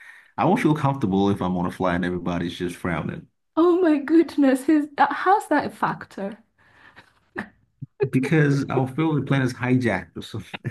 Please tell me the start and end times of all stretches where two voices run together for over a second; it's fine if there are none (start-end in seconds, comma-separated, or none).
none